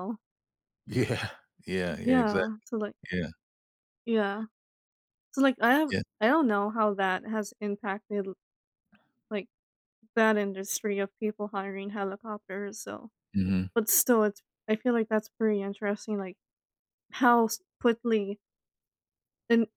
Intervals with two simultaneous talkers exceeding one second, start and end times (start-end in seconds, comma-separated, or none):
none